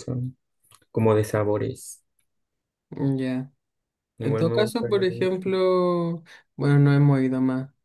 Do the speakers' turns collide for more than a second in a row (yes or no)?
yes